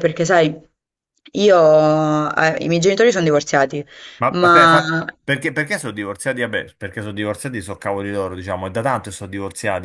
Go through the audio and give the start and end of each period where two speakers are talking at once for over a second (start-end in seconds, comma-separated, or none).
none